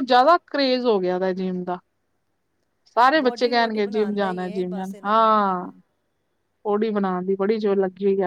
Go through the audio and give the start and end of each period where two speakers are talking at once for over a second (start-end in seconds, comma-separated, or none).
3.2-5.4